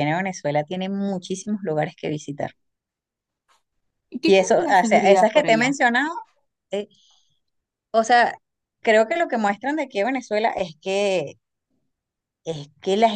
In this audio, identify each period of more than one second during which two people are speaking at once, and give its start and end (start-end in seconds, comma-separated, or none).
4.3-5.8